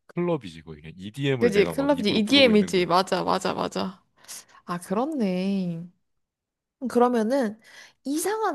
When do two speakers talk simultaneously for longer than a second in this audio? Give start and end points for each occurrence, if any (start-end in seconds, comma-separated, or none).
1.4-2.9